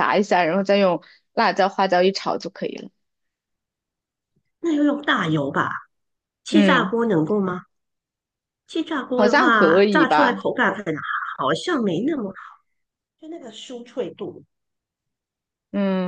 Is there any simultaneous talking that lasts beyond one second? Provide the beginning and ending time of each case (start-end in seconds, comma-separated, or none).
9.2-10.4